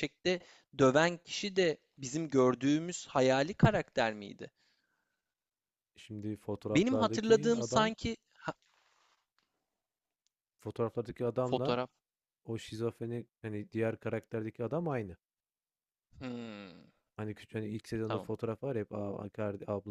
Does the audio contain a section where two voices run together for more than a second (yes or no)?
yes